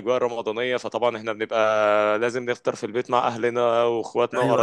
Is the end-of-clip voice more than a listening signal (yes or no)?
yes